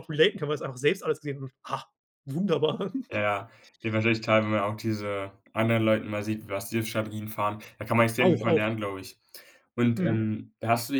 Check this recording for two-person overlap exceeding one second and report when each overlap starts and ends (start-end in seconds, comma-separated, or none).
none